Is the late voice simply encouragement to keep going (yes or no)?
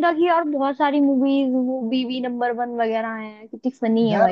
no